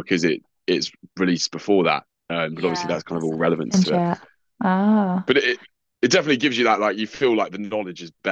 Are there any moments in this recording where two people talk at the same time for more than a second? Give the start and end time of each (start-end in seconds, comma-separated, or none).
2.5-4.0